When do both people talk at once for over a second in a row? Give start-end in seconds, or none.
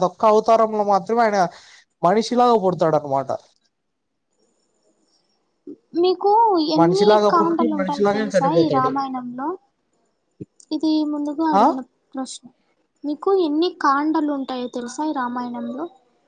6.8-8.9